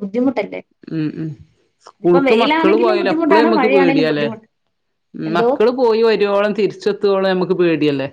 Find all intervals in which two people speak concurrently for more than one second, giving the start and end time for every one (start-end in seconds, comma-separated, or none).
2.3-4.2